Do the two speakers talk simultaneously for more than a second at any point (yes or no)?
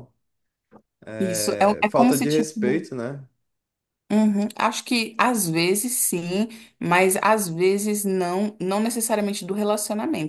yes